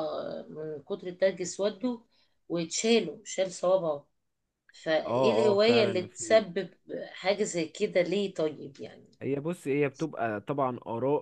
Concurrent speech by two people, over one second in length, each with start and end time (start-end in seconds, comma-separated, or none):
5.1-6.4